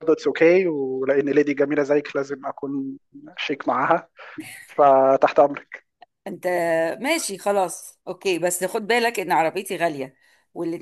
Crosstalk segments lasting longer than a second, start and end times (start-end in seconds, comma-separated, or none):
none